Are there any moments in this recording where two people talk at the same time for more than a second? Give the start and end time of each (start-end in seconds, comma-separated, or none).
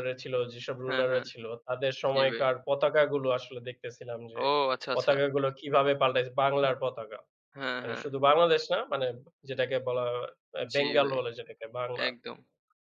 none